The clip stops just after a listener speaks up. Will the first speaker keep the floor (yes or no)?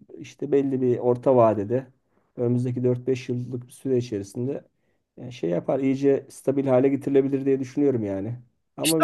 no